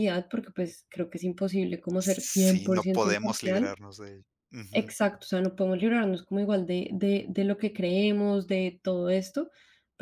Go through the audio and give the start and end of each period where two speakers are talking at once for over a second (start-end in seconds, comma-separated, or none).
2.0-3.7